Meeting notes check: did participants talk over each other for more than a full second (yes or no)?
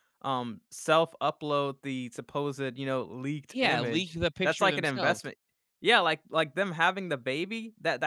yes